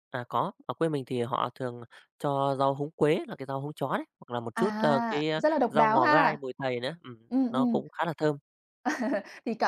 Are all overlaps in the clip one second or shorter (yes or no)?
no